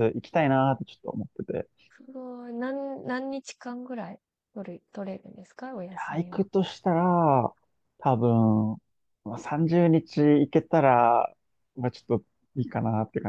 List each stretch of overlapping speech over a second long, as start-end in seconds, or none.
none